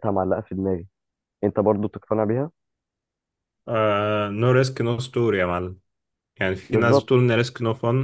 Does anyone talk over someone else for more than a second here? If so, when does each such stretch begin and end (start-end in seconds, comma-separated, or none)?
none